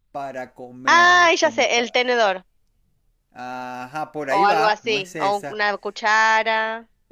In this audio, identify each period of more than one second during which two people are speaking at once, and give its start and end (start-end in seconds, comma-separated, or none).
0.9-2.1, 4.3-5.6